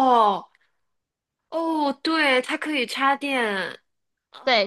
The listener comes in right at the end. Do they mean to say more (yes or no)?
yes